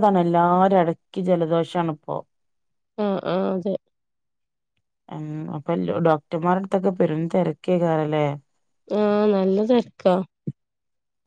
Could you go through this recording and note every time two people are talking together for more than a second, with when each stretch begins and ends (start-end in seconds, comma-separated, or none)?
none